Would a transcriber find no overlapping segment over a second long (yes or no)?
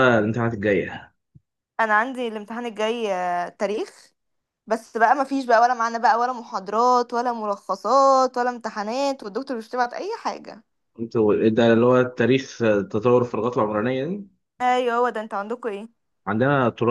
yes